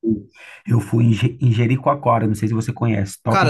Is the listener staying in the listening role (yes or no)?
no